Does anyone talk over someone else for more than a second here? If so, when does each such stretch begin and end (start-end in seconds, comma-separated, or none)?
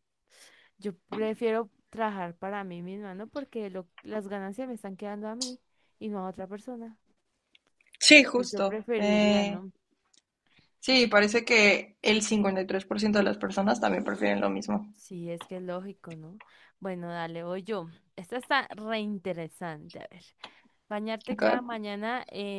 8.3-9.6